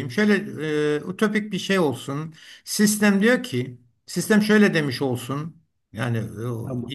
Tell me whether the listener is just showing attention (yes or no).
yes